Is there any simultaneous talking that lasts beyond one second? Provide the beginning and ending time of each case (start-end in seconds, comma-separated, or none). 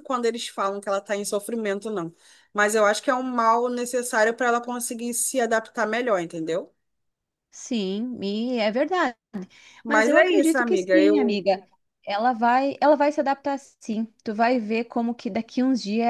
9.9-11.4